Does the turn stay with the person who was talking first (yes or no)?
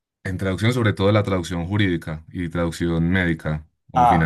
no